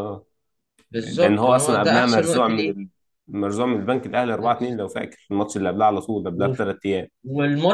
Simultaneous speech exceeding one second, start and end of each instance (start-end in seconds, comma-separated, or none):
0.9-2.7